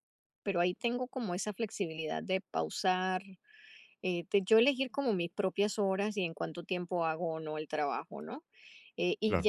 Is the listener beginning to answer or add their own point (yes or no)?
no